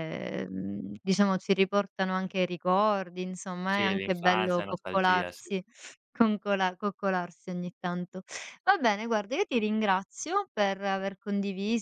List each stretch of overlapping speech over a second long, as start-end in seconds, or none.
3.6-5.5